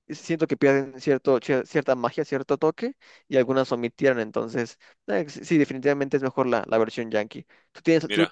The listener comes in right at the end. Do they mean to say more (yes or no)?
no